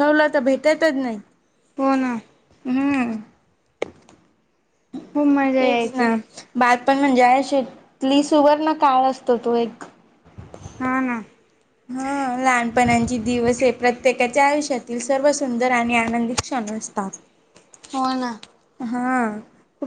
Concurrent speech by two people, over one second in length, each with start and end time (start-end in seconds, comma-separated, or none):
none